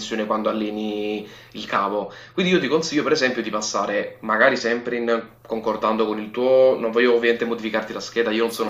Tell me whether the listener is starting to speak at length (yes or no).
no